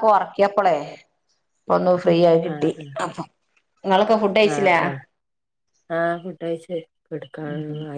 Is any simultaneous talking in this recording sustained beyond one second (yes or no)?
no